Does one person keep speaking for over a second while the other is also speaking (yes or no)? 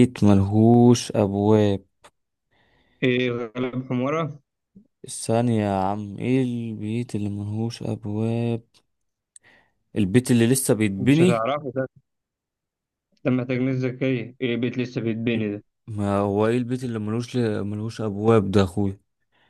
no